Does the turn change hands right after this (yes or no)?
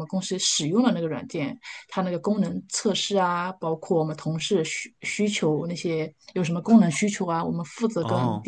no